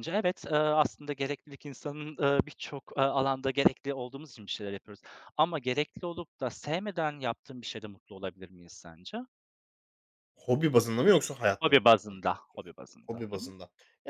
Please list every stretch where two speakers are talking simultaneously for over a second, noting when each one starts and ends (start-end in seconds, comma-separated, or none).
11.6-13.4